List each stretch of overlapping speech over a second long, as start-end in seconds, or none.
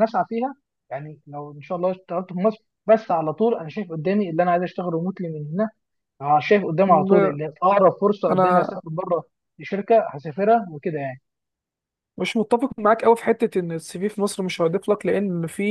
none